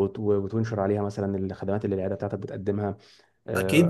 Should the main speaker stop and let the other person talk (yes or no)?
yes